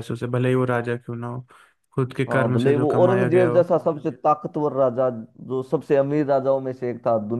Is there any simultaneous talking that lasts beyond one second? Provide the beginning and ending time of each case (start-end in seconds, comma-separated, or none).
2.3-3.7